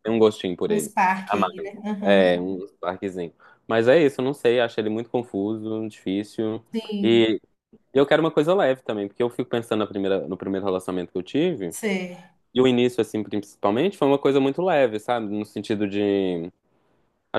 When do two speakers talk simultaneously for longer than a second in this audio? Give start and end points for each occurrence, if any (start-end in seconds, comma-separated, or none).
0.7-2.4